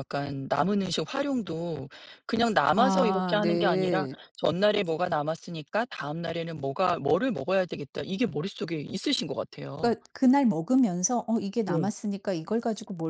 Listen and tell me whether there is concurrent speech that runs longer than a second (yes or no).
yes